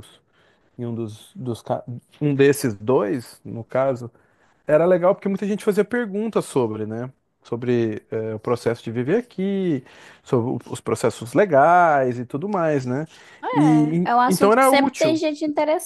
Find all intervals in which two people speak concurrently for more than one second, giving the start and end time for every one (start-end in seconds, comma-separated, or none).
13.5-15.2